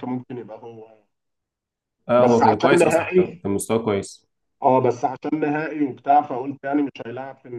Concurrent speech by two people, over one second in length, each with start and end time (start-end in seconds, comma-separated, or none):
2.2-3.4